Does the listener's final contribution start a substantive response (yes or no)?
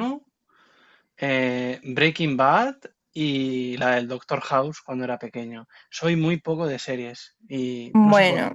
no